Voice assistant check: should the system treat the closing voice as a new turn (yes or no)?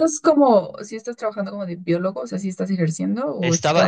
yes